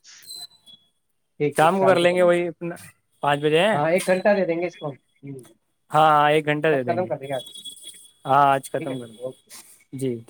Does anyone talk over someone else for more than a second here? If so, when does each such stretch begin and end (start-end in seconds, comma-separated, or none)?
none